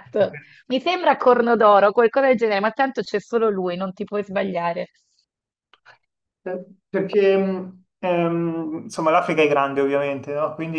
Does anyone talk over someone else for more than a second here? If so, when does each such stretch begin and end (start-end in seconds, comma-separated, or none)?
none